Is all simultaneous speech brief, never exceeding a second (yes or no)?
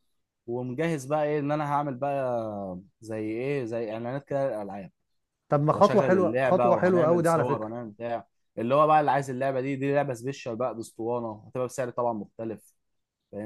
no